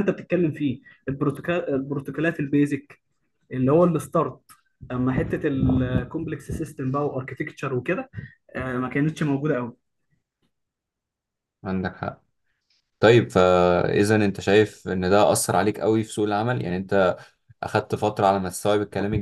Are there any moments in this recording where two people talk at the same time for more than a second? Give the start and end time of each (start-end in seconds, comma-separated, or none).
none